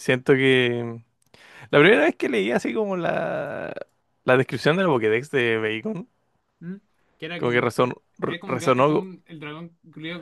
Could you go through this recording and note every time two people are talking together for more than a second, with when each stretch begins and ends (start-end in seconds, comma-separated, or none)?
7.4-9.1